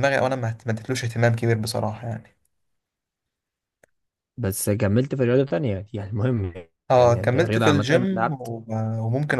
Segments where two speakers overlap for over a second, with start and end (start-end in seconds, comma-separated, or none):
7.0-8.5